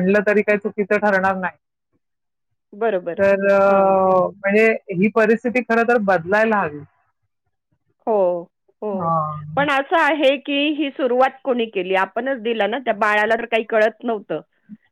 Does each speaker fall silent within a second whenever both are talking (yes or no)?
yes